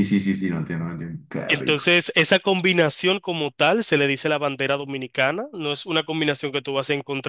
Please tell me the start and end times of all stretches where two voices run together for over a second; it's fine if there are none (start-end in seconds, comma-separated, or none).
none